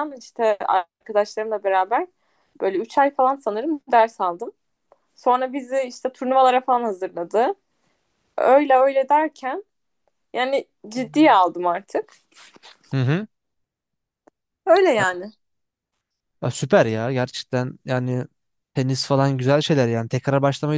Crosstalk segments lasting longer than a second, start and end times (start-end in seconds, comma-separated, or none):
none